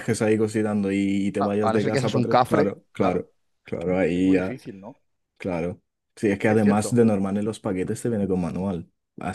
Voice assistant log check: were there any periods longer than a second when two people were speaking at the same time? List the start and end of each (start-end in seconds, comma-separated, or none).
1.4-3.3